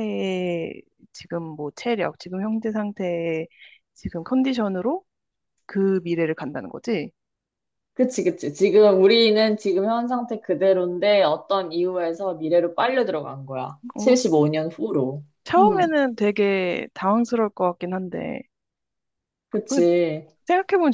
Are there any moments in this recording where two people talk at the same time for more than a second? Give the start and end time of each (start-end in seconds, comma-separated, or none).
none